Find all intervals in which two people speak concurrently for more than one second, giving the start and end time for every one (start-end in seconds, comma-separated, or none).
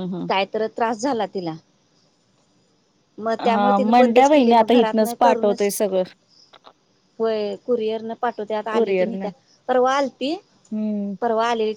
3.5-5.7